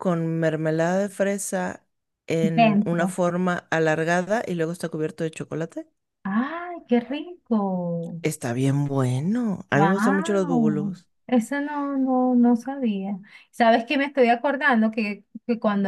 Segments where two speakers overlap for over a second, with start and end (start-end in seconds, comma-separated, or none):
9.7-11.1